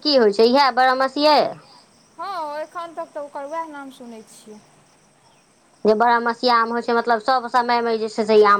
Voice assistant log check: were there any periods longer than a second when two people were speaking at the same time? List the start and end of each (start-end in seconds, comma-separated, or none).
none